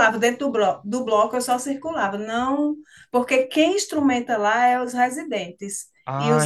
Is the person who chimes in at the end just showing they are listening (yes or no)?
no